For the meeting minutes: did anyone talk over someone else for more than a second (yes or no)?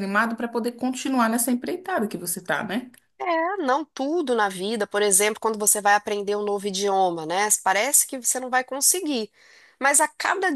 no